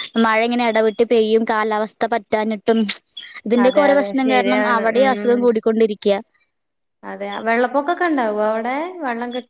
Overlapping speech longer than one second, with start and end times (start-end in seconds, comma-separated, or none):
3.6-5.4